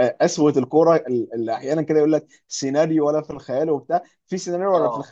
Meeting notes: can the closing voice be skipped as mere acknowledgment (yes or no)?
yes